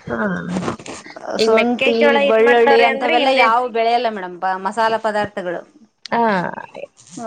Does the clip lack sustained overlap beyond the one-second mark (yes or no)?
no